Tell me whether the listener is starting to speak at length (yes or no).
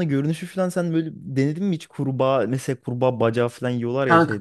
yes